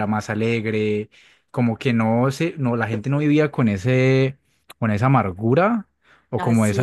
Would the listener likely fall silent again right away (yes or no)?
yes